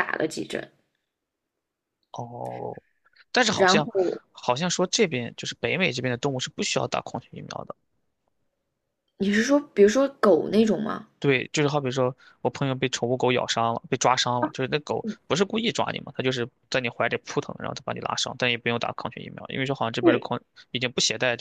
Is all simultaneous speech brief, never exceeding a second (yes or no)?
yes